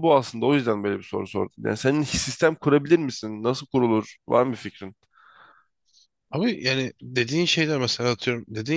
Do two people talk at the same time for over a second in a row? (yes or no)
no